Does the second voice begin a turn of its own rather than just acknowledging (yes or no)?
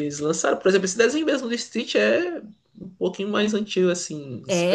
yes